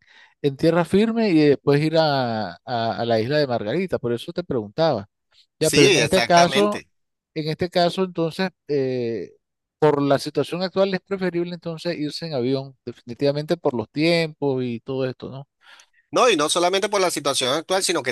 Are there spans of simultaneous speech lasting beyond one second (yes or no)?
yes